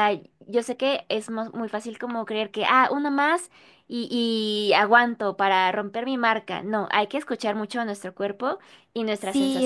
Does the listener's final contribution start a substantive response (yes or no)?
yes